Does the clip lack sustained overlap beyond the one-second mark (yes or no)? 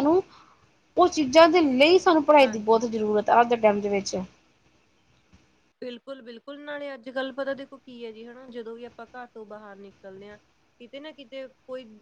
yes